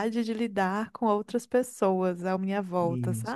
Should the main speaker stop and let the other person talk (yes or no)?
yes